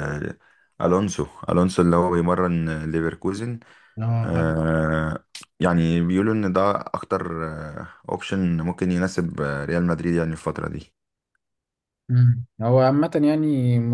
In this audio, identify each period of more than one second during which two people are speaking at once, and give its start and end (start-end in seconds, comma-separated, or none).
none